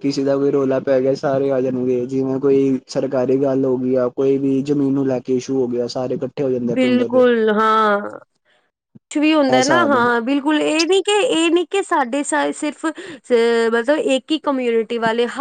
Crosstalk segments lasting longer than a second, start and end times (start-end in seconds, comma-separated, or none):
none